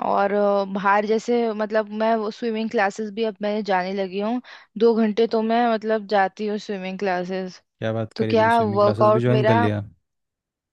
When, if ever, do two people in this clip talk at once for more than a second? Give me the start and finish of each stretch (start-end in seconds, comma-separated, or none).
8.1-9.6